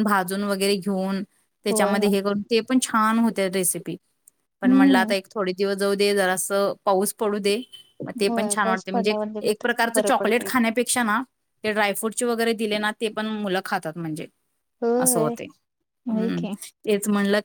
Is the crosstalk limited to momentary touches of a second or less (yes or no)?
no